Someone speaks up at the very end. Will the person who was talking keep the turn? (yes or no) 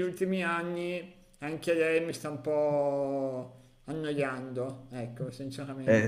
no